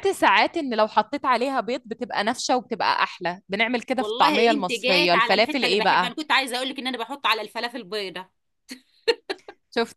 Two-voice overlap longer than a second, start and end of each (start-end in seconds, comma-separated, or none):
4.0-6.1